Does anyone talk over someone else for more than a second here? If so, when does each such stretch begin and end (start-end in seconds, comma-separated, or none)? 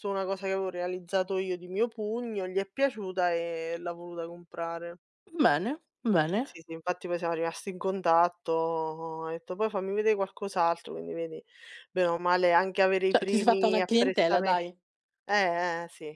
13.1-14.6